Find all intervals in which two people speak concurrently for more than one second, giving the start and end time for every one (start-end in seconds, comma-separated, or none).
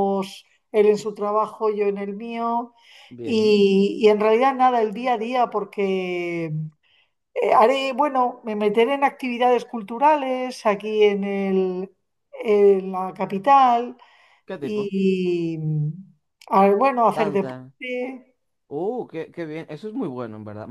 none